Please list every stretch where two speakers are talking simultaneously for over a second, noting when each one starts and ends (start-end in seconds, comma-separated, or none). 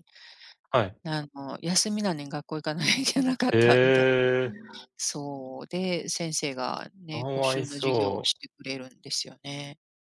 7.1-8.4